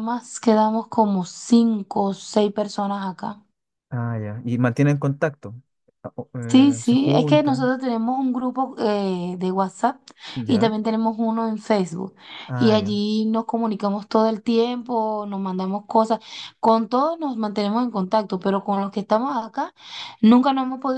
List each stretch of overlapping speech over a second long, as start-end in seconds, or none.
6.5-7.7